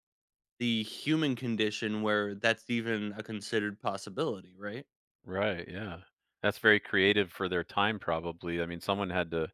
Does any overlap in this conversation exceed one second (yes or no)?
no